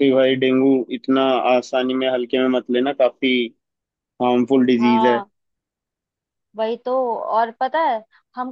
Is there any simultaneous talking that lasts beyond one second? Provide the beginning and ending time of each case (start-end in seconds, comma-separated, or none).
none